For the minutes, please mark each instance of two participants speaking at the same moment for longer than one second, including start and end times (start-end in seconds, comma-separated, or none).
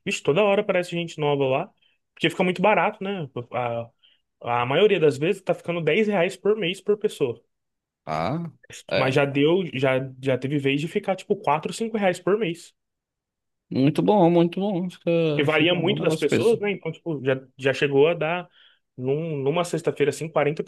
15.3-16.6